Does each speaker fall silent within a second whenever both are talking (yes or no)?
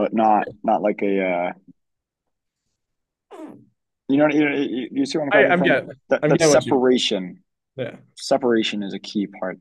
no